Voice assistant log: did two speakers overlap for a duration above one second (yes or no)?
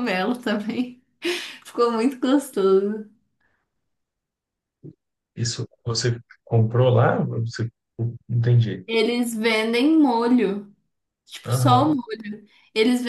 no